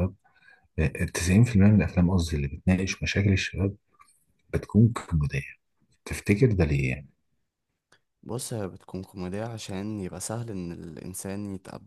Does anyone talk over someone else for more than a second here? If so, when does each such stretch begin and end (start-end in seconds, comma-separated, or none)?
none